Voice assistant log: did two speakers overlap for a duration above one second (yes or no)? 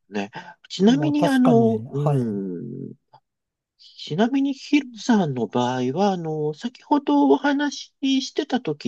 yes